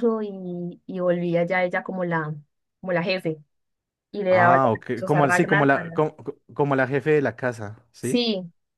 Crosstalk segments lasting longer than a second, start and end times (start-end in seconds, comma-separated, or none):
4.3-6.0